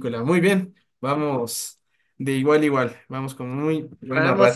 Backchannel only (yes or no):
no